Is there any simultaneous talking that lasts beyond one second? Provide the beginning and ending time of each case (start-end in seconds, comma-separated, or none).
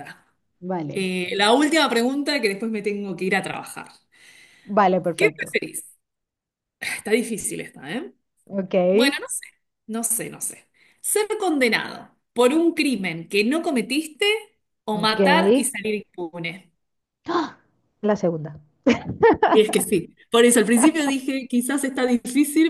none